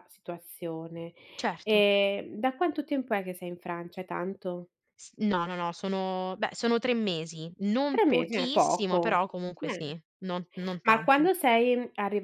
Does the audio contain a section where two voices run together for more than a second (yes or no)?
yes